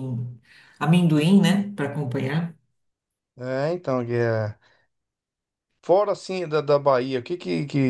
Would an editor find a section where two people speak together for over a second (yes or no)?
no